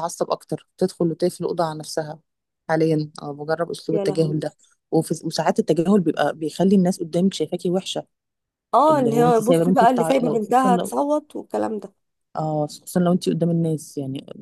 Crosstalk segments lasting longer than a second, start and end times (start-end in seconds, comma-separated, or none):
8.9-11.0